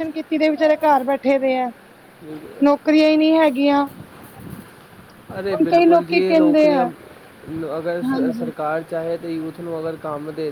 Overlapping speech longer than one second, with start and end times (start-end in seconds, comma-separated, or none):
5.5-6.8